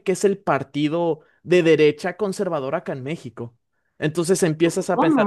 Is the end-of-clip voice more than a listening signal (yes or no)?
no